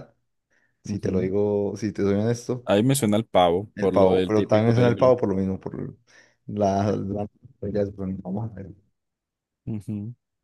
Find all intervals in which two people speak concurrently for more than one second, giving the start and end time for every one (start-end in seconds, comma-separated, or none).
3.7-5.2